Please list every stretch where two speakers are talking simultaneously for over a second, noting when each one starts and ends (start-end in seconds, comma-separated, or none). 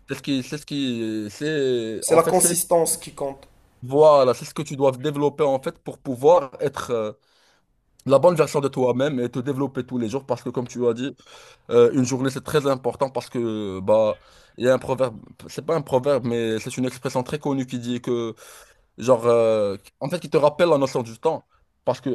none